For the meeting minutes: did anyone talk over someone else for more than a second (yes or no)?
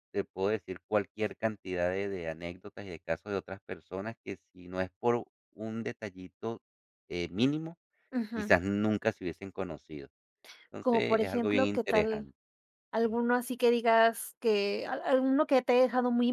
yes